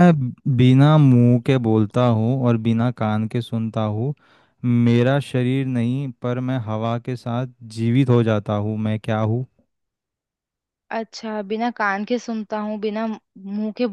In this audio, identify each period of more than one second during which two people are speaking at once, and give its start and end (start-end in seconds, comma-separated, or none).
none